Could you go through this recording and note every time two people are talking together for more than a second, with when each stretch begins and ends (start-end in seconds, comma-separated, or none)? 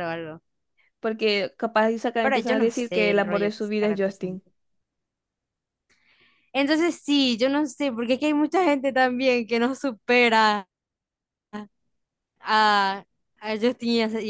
2.2-4.4